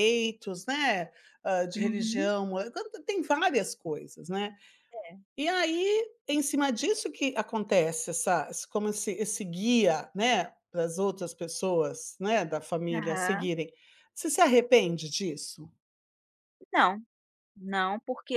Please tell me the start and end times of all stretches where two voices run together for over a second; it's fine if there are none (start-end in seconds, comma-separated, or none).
none